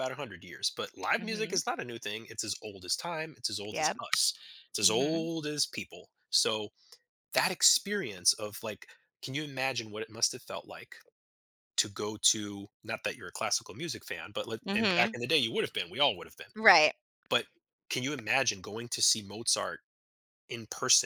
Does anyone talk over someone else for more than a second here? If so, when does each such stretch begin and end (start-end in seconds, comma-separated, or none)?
none